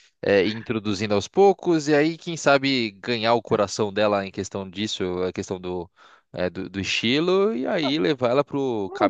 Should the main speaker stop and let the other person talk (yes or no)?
yes